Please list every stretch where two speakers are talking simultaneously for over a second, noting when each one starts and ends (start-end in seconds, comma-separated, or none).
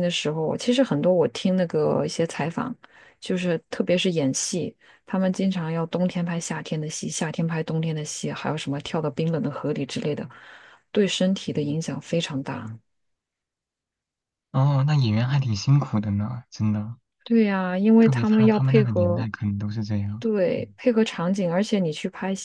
18.0-19.2